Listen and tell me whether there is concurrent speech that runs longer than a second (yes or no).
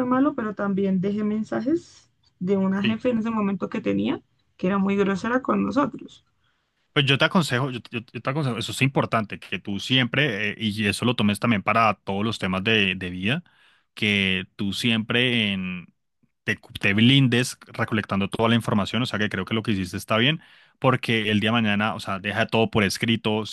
no